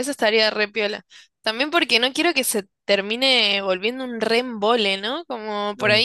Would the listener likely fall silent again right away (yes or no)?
yes